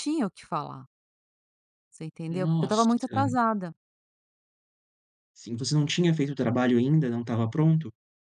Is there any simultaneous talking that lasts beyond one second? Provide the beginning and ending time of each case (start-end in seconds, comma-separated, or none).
none